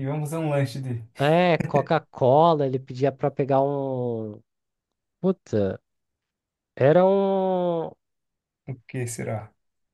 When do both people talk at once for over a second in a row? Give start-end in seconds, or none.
none